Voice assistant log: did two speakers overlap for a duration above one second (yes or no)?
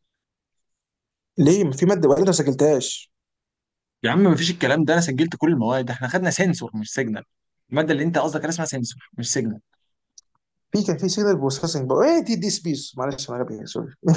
no